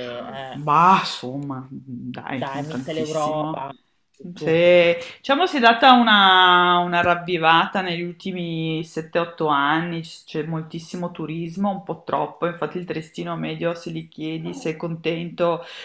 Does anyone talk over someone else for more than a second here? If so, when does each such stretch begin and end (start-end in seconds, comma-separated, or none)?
2.4-3.7